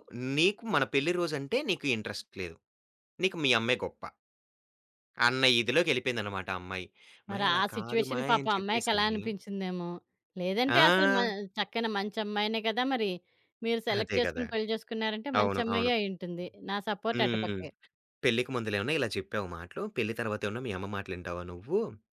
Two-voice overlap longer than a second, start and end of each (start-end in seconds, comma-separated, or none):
7.3-9.1